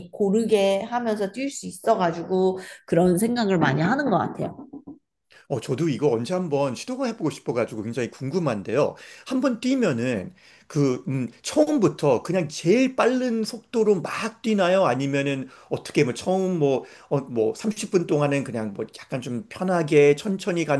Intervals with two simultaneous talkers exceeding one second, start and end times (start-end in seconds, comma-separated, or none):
none